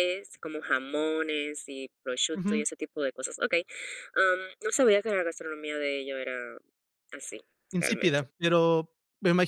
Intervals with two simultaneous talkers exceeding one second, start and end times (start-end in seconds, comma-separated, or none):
none